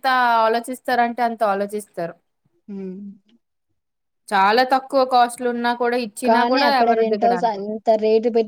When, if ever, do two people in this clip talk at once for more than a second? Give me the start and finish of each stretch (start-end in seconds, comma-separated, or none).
none